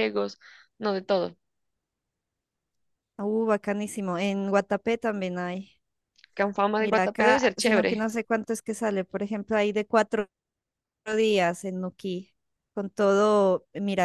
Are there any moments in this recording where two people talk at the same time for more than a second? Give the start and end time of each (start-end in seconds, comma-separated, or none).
6.8-8.1